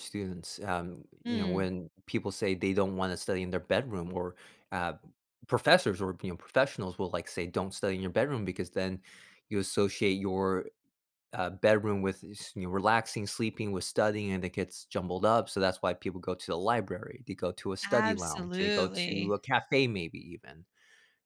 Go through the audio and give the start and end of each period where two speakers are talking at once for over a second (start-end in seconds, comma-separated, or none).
17.9-19.4